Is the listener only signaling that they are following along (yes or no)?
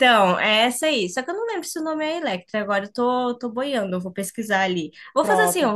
no